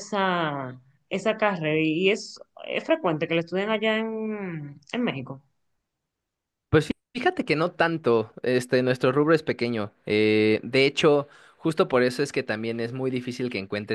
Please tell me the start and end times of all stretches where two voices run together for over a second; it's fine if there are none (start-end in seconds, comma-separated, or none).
none